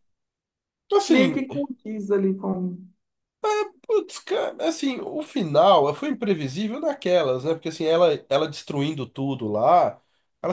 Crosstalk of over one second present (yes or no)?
no